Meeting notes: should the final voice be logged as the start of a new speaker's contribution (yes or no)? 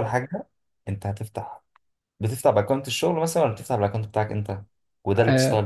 yes